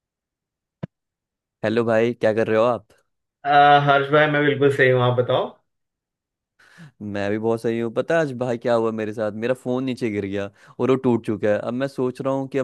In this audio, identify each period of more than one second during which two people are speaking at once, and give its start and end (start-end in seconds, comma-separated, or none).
none